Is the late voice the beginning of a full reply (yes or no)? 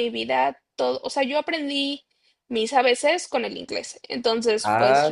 yes